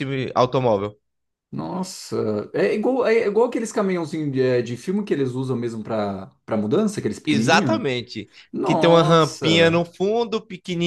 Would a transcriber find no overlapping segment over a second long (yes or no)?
no